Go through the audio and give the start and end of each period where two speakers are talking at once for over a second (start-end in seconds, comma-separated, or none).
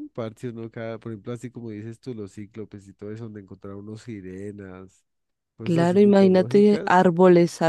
5.6-7.0